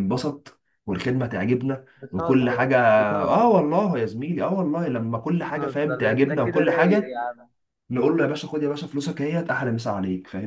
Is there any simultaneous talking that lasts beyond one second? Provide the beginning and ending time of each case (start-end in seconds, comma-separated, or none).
5.4-7.1